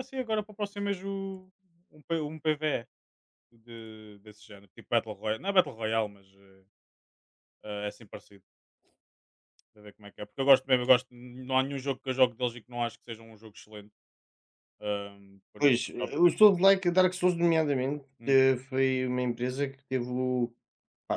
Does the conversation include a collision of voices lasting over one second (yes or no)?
yes